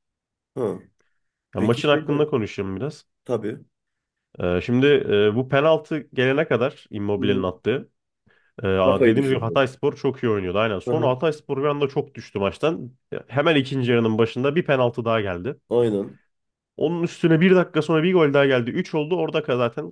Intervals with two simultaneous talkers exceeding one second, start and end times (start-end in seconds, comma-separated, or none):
none